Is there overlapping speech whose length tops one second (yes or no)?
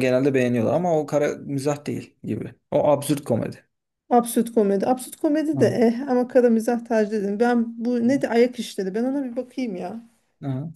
no